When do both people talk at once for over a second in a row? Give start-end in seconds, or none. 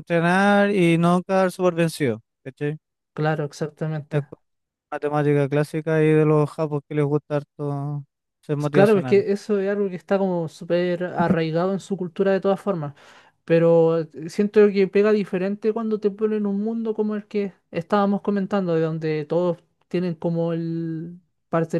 none